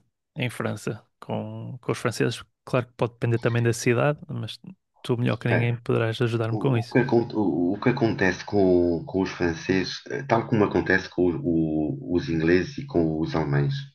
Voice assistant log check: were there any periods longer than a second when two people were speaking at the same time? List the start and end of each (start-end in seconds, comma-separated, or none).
none